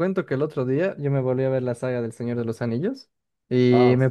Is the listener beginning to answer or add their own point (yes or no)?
no